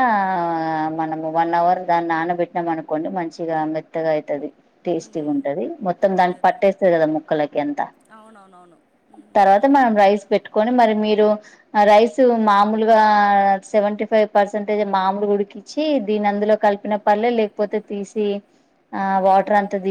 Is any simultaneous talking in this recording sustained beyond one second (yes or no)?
no